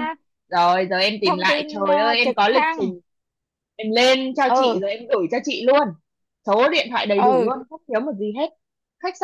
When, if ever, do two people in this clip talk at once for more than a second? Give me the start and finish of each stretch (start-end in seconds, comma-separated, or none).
1.2-2.9